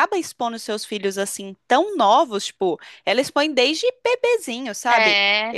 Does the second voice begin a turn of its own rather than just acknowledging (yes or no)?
no